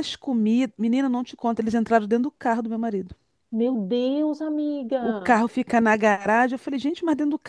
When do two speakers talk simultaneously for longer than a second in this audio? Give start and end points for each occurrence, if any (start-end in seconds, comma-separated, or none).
none